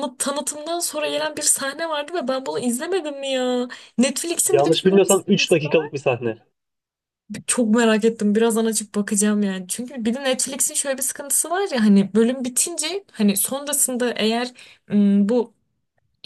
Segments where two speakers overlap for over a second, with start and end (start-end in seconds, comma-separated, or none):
4.5-5.9